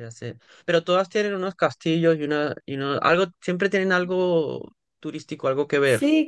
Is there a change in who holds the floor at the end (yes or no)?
yes